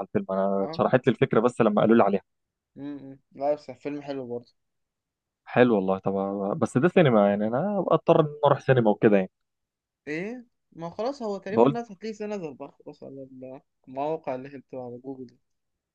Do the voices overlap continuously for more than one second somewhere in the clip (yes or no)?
no